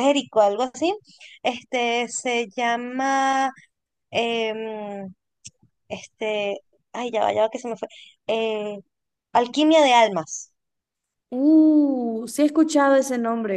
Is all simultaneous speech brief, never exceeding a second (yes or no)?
yes